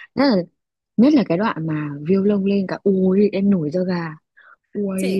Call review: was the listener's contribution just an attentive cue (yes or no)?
no